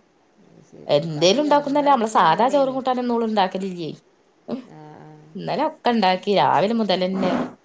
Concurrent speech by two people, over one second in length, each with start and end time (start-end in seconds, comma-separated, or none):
0.9-2.7